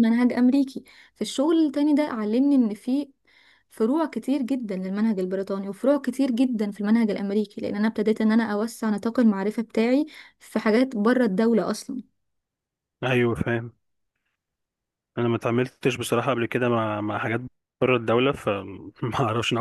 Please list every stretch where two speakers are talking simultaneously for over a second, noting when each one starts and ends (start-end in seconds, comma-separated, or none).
none